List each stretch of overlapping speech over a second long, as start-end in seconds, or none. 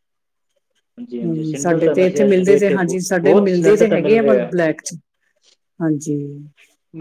1.2-4.4